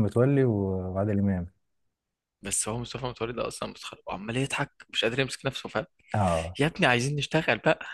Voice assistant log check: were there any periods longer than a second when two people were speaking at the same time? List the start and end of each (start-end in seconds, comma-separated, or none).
none